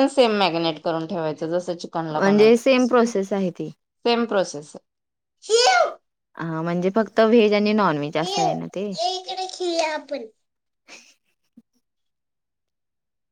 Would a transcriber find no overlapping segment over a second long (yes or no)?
no